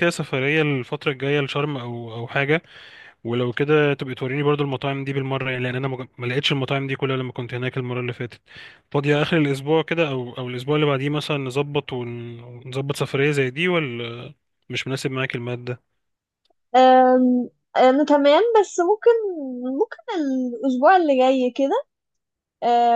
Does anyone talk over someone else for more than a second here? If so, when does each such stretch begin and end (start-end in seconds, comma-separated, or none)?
none